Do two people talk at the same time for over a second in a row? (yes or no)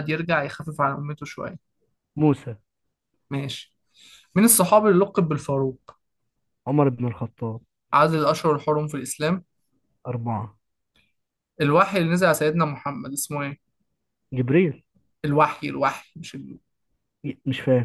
no